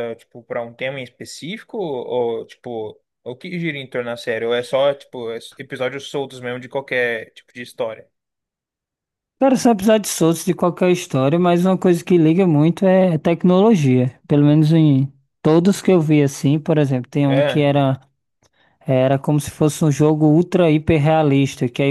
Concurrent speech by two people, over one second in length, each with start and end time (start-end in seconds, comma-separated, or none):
none